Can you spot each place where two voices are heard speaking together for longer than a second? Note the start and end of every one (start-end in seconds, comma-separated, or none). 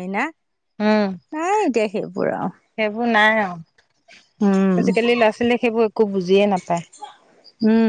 none